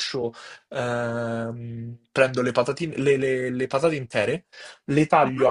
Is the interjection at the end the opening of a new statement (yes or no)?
no